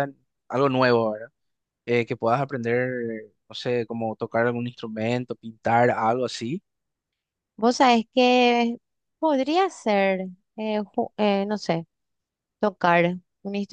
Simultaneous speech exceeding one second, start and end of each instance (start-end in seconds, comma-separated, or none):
none